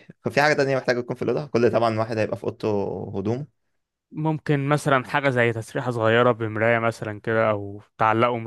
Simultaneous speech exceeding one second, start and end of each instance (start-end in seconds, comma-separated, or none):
none